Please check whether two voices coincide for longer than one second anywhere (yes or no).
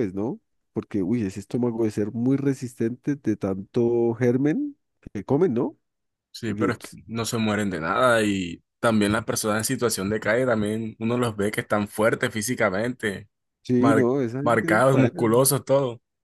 yes